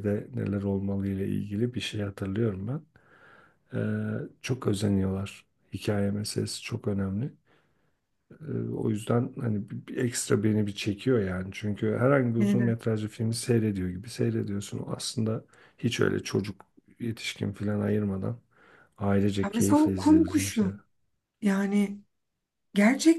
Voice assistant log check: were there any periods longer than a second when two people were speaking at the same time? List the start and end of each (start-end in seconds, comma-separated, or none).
19.4-20.8